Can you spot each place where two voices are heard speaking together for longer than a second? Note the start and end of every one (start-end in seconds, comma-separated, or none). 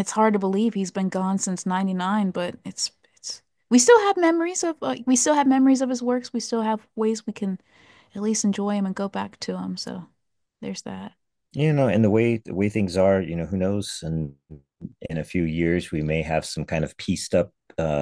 none